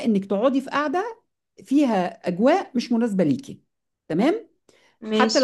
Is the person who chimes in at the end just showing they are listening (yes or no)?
yes